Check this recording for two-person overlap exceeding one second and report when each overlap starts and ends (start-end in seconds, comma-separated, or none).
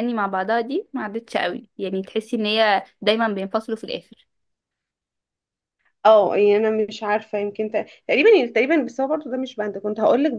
none